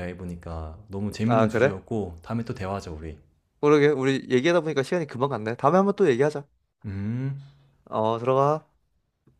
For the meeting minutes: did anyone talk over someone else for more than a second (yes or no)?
no